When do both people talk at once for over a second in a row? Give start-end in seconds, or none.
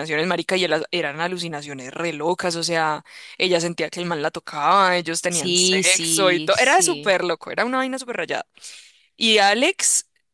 5.3-7.2